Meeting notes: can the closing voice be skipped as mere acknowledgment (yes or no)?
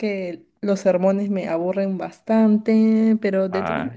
yes